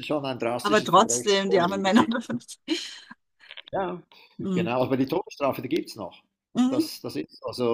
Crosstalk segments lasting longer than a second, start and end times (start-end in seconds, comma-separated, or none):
0.6-1.9